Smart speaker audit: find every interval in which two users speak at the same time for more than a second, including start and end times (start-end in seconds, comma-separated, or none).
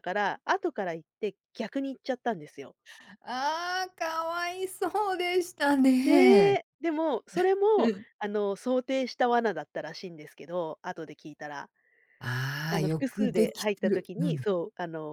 12.7-14.5